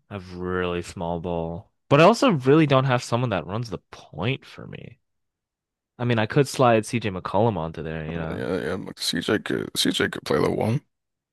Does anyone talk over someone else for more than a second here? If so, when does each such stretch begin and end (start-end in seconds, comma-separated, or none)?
none